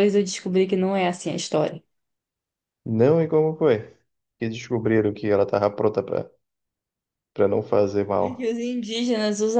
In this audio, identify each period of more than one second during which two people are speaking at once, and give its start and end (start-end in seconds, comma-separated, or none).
none